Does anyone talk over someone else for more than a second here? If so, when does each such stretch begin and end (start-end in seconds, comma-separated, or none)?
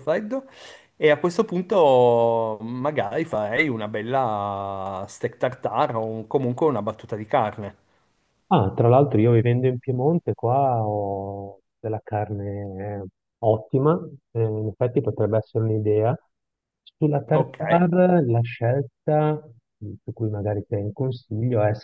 none